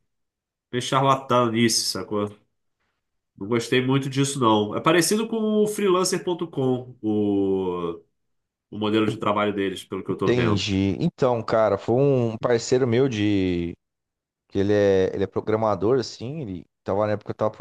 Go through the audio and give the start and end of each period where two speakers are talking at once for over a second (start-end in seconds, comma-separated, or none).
none